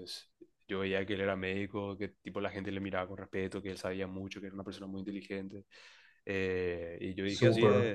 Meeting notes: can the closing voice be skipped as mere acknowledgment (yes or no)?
yes